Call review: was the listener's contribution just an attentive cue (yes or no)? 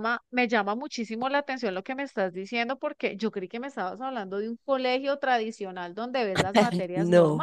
yes